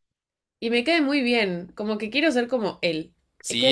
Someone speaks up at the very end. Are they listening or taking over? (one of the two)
taking over